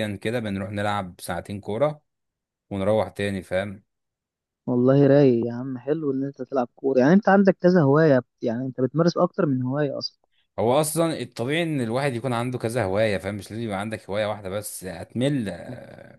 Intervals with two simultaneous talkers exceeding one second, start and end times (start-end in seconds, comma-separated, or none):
none